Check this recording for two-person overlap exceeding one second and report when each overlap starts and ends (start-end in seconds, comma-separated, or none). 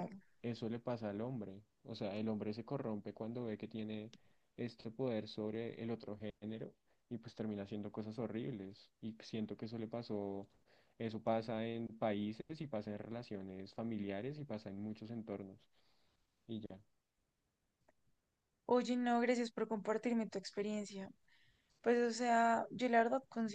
none